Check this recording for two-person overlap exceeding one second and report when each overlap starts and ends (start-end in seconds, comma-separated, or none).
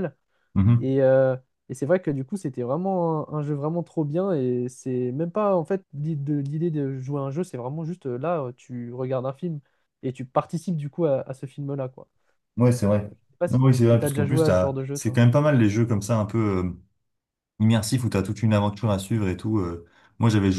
12.9-15.2